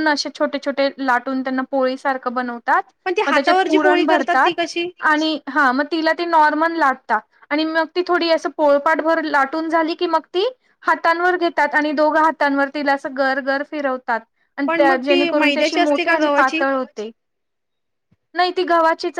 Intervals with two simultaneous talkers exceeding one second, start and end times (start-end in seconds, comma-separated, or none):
14.7-16.6